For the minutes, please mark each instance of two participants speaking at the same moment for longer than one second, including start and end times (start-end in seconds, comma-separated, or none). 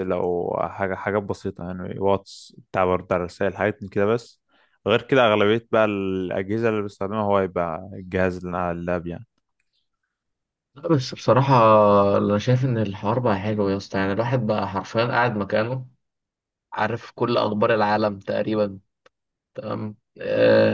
none